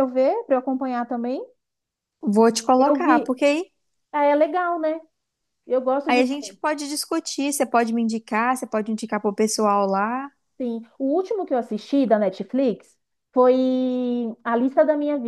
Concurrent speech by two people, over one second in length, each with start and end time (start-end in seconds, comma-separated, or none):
none